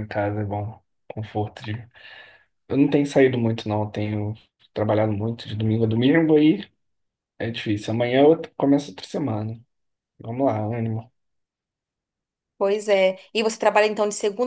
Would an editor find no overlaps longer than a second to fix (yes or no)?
yes